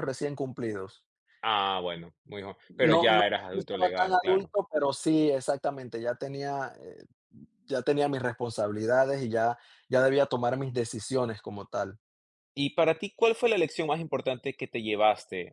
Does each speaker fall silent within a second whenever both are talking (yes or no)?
no